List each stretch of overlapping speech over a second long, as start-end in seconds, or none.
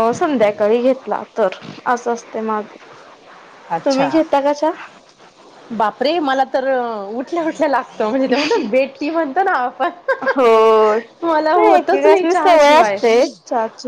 11.3-13.0